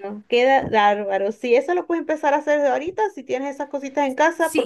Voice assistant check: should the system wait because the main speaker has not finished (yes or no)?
no